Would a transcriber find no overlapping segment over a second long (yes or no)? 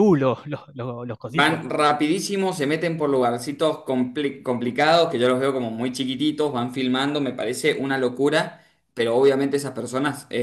yes